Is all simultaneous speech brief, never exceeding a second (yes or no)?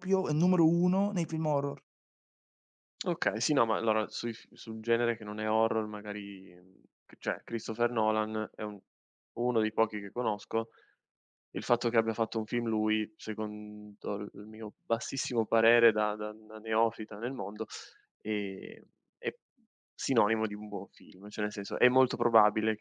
yes